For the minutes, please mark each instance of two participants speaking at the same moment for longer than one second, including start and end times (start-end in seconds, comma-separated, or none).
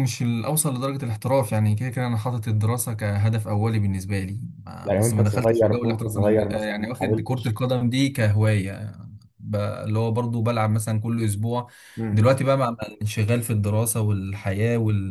4.8-7.6